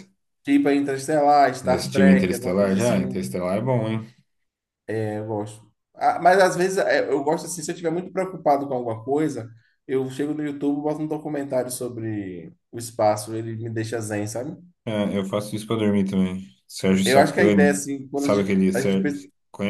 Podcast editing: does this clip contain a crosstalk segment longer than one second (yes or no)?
yes